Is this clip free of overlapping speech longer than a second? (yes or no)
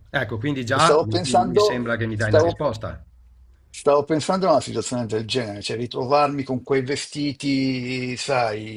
no